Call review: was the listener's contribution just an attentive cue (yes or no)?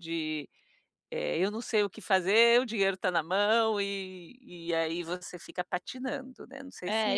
no